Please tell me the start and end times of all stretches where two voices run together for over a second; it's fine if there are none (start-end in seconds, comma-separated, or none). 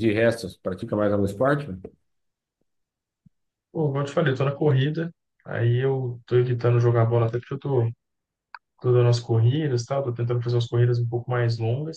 none